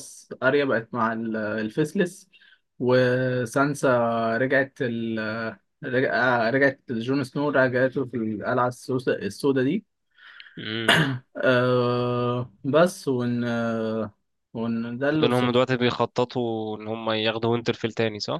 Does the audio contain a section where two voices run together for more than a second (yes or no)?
no